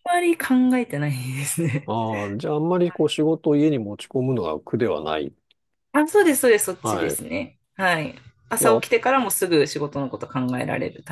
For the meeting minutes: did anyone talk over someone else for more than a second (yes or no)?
no